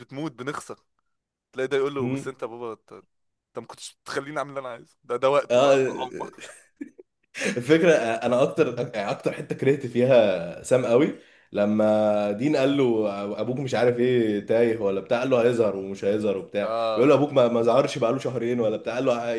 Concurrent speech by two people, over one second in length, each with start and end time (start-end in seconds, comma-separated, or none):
none